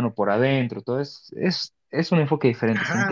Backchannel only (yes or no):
no